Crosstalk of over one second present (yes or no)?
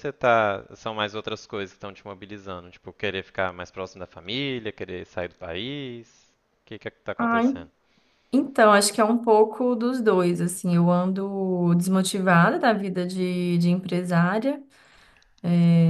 no